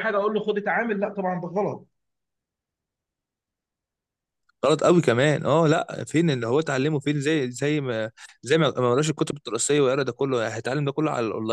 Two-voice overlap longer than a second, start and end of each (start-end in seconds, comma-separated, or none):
none